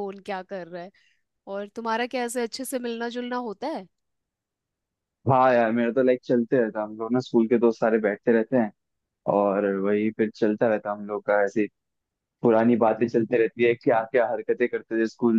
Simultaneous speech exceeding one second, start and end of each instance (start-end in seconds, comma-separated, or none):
none